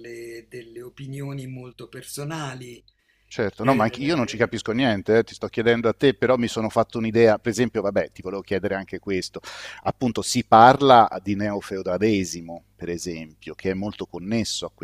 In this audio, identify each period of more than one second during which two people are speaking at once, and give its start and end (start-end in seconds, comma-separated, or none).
none